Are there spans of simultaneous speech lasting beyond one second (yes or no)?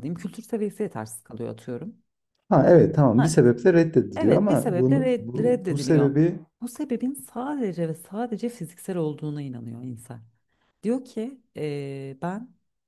yes